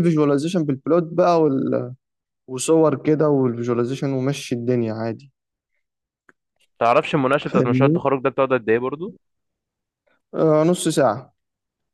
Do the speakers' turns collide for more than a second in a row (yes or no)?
no